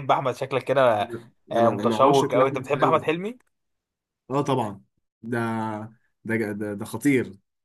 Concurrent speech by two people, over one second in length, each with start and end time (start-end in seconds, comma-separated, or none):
1.6-3.0